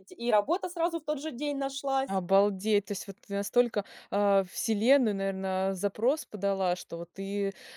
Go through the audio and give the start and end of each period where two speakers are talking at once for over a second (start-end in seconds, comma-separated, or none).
none